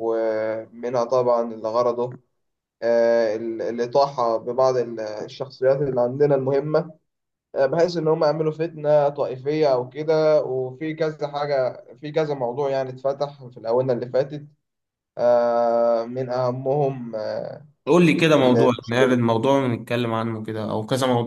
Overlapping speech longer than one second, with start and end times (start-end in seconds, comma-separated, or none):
none